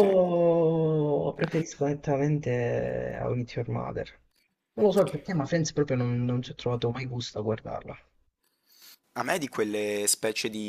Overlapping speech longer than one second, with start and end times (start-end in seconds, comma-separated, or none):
none